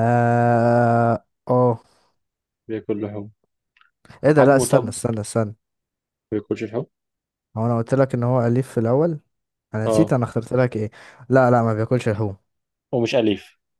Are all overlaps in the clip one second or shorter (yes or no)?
yes